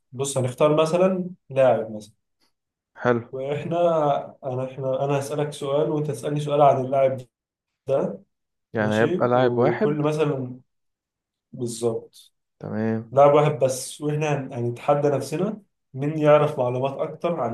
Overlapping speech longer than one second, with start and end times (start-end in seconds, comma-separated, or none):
8.8-10.1